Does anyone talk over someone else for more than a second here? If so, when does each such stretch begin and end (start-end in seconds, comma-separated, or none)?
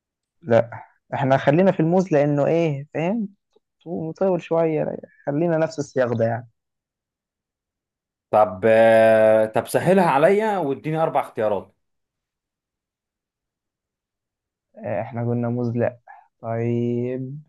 none